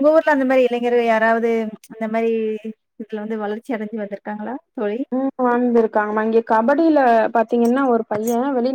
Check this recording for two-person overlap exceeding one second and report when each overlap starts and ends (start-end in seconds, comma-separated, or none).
none